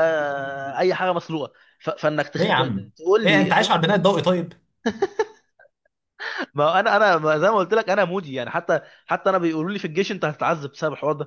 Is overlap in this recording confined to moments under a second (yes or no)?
no